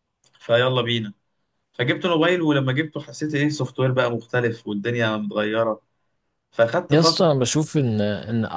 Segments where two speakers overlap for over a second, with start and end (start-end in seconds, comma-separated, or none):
none